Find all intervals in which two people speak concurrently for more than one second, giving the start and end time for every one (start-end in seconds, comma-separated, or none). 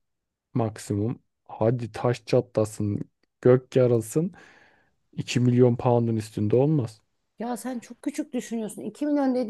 none